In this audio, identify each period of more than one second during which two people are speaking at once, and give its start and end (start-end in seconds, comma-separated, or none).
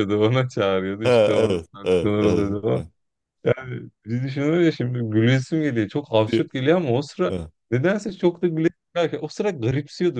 1.0-2.8